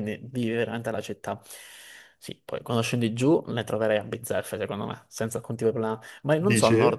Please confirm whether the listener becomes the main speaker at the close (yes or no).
no